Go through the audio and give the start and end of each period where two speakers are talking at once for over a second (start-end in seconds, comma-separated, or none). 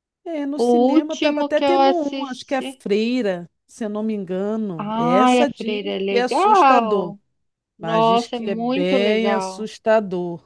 0.5-2.8, 4.8-7.1, 7.8-9.7